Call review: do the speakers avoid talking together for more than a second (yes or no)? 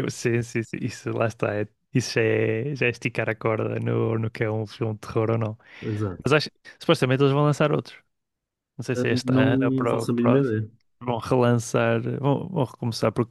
no